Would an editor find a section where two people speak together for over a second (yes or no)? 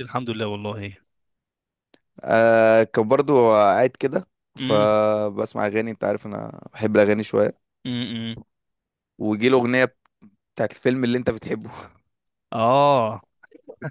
no